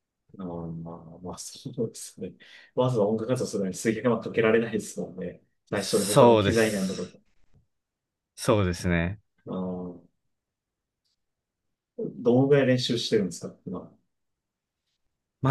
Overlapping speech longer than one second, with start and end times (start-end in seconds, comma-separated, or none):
5.8-7.2